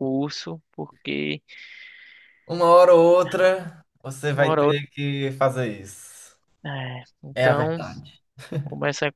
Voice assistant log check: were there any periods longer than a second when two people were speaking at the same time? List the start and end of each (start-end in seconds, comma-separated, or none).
none